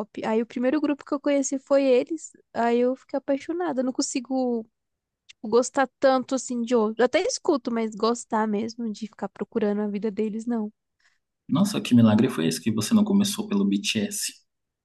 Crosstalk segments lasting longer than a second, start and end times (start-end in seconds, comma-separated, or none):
none